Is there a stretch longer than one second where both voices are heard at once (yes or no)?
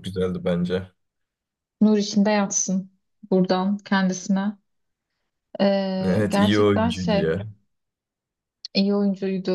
yes